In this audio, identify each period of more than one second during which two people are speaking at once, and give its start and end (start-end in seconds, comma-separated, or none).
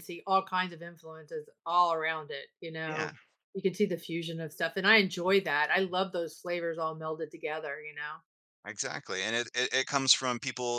none